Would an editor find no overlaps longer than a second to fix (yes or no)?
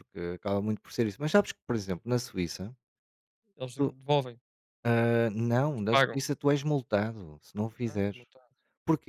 no